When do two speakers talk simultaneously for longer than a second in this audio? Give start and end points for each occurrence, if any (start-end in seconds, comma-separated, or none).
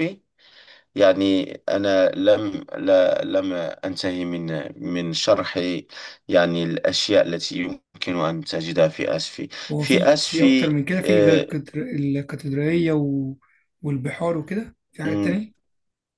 9.7-11.5